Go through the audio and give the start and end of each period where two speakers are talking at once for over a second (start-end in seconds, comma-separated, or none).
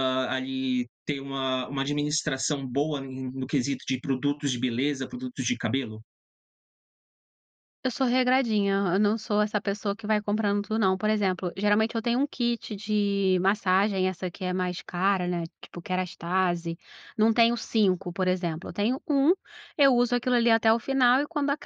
none